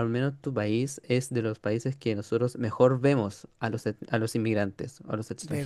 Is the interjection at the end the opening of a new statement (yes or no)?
no